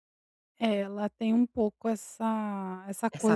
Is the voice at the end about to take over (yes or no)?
no